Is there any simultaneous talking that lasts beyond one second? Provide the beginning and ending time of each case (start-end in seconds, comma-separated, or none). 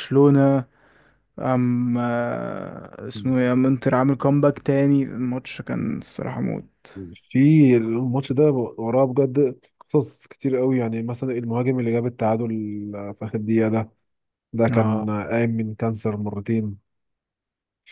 none